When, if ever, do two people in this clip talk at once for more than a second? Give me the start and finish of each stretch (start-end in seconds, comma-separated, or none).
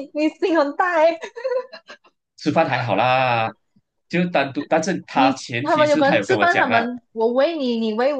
5.1-6.9